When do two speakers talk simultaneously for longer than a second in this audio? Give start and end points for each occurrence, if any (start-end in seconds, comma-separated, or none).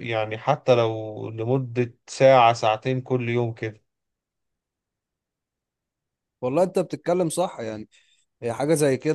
none